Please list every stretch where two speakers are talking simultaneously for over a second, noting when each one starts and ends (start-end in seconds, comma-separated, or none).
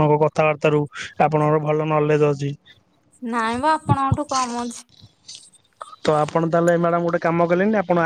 none